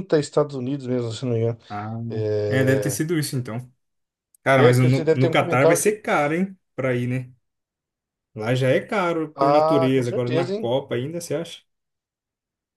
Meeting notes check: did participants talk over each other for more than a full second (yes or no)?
yes